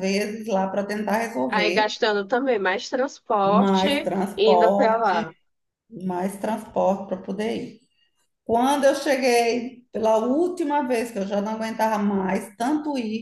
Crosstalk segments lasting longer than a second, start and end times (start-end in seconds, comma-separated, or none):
3.4-5.2